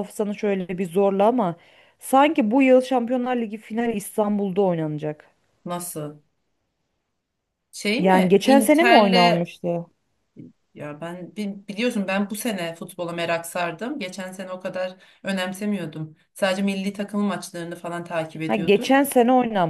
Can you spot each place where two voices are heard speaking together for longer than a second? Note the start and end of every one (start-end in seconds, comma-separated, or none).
8.0-9.5